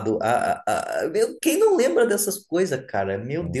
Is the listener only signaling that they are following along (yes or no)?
yes